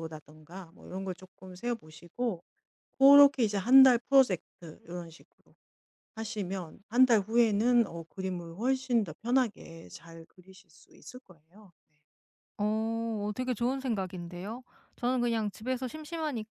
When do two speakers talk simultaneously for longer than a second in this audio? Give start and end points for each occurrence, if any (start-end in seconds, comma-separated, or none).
none